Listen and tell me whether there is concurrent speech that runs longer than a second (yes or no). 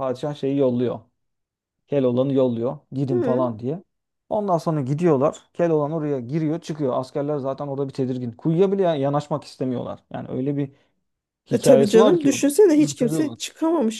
yes